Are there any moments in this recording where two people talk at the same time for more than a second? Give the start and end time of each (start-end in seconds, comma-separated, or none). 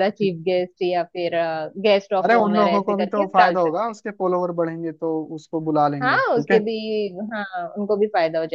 2.2-4.0